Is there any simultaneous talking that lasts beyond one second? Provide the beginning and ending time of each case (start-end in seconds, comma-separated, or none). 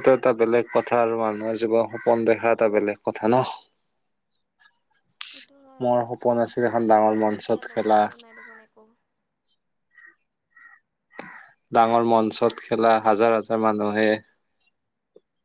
6.6-8.0